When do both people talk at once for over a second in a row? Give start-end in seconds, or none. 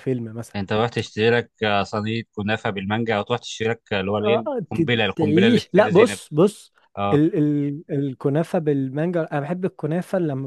4.2-6.2